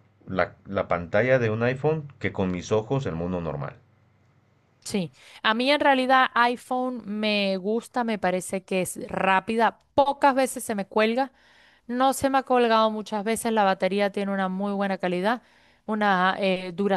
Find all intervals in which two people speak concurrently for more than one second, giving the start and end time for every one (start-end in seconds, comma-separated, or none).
none